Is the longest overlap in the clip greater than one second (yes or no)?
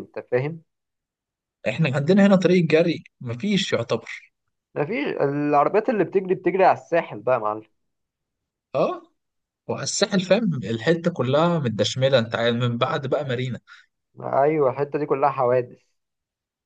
no